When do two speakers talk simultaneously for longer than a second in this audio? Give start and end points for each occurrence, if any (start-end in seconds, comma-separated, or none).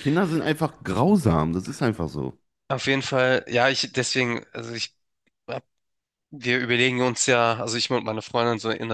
none